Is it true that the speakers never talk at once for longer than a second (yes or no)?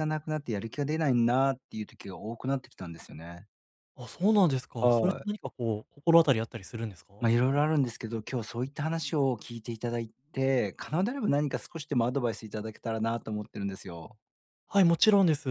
yes